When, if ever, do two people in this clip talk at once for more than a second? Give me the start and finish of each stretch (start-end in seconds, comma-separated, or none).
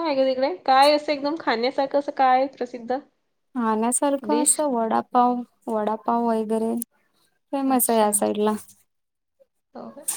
none